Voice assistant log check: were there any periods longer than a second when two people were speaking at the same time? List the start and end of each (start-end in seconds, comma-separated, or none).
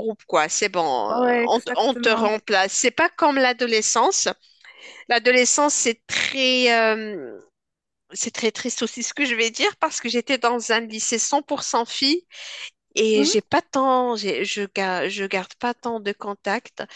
1.1-2.3